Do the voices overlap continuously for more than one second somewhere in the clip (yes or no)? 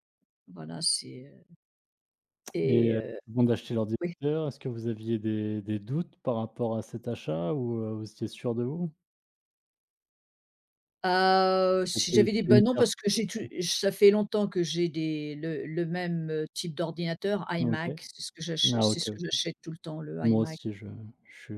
yes